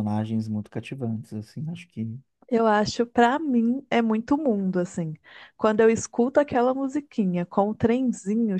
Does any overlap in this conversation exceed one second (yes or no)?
no